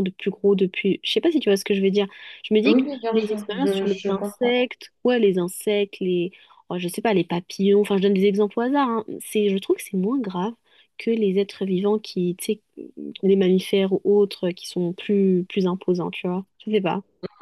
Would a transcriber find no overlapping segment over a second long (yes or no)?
no